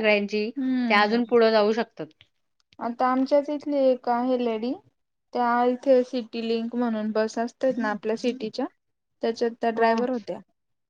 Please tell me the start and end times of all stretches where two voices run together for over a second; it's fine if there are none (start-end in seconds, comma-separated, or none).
none